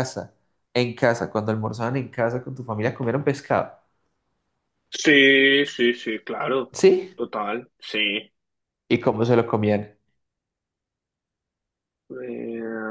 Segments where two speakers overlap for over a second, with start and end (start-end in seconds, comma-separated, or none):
none